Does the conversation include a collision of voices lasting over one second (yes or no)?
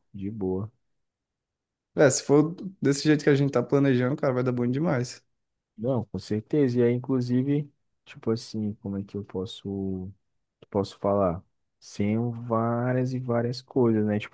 no